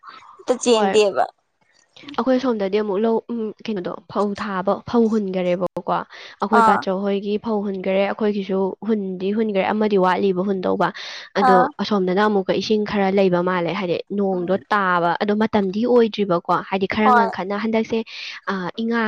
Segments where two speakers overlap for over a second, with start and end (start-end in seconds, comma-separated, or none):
none